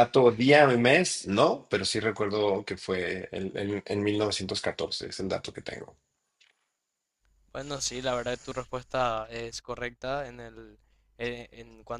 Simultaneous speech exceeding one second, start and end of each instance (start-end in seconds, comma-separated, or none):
none